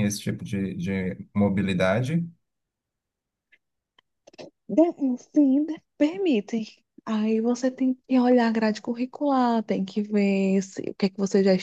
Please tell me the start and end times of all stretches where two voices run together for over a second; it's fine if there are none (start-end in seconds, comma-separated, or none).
none